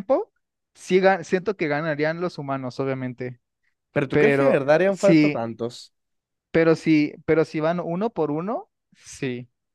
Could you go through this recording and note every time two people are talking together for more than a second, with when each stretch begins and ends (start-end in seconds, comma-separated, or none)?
4.1-5.4